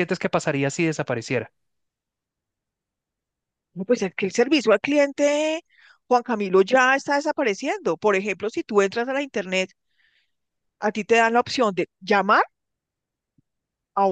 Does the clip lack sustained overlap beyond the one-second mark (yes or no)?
yes